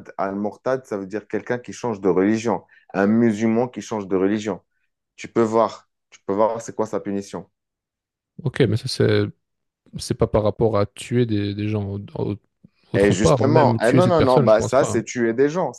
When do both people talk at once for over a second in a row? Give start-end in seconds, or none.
12.9-15.1